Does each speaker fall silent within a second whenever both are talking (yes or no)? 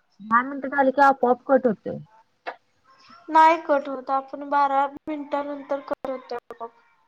yes